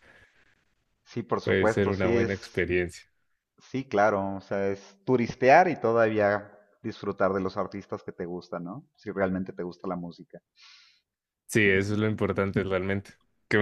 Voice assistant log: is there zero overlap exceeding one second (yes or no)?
no